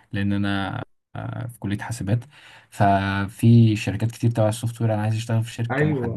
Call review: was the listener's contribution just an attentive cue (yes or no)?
no